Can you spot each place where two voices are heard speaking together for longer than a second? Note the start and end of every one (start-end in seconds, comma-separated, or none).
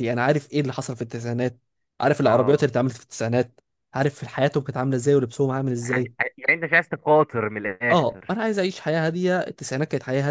none